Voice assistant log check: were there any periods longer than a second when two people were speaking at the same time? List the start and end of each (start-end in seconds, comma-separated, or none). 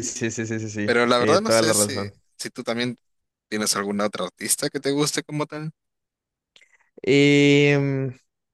0.8-2.1